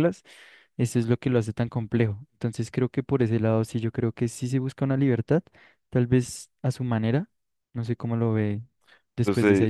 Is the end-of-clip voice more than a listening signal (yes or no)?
yes